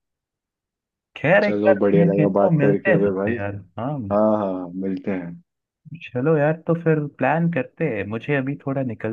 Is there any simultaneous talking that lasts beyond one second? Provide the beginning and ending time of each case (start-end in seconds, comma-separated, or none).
1.4-3.4